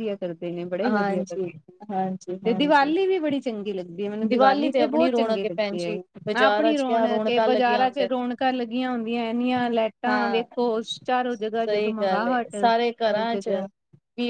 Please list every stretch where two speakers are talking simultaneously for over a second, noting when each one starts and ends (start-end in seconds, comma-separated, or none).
6.3-8.1